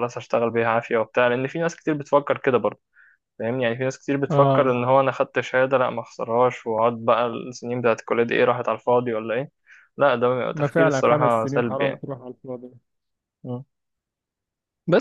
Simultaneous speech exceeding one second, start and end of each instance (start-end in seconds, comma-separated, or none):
10.5-12.0